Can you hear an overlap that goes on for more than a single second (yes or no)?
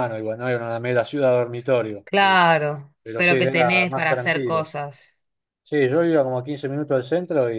yes